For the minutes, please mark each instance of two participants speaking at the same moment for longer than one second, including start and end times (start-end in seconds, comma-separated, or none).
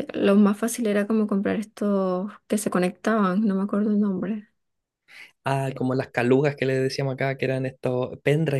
none